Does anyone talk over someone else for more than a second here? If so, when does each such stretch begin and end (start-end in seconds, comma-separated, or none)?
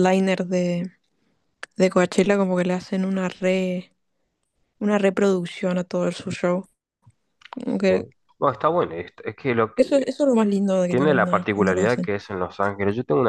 10.9-12.1